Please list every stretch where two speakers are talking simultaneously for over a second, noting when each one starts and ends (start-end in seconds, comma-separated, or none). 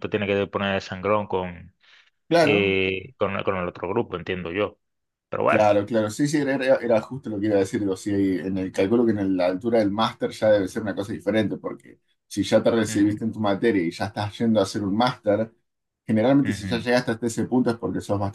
none